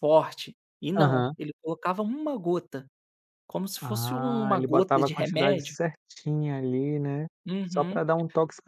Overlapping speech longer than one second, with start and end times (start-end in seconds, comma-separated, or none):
3.8-5.8